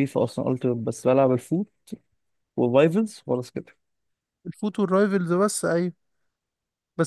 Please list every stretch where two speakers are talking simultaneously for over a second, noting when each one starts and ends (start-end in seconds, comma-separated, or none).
none